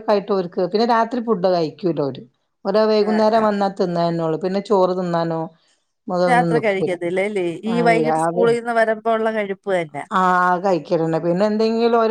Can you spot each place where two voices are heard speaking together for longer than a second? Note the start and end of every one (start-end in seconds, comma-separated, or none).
none